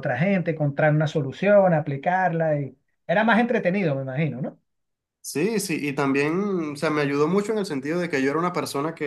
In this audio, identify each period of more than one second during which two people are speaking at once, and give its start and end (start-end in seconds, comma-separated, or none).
none